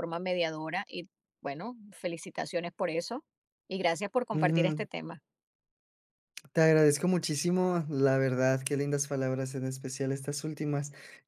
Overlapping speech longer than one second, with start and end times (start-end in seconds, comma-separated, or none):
none